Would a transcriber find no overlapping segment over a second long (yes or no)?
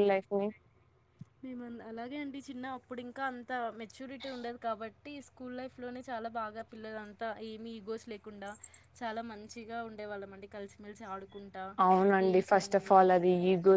yes